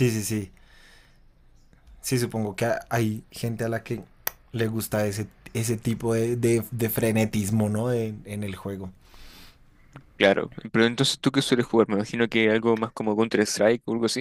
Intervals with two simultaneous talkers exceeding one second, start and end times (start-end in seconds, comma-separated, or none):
none